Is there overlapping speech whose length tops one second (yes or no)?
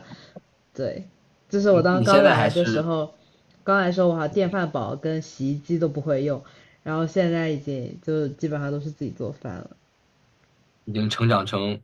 yes